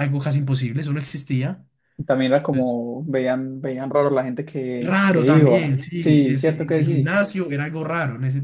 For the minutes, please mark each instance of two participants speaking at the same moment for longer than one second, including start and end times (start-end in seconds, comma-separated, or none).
4.8-7.2